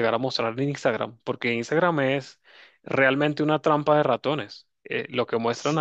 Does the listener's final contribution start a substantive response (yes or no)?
no